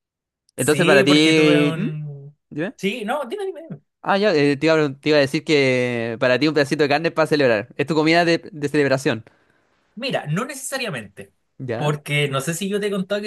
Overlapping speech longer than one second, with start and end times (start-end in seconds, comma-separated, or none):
0.6-1.9